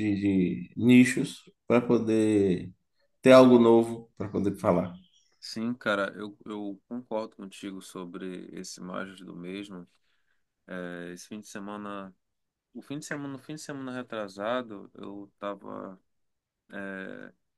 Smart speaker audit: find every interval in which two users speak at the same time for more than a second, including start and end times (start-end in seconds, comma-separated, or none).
none